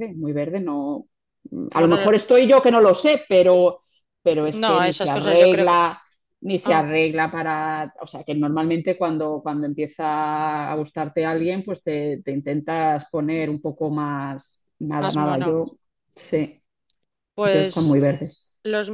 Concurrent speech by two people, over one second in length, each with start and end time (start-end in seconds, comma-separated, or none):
4.5-5.8